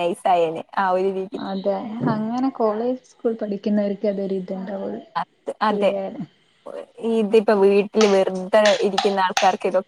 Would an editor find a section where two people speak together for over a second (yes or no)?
no